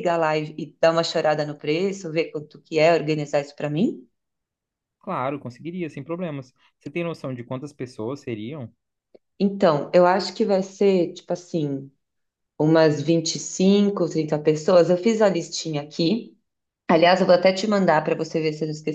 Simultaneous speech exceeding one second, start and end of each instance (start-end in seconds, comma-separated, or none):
none